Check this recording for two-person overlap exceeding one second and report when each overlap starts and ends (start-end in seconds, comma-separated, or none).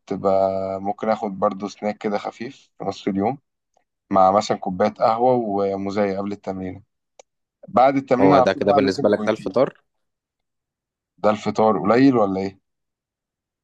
8.2-9.6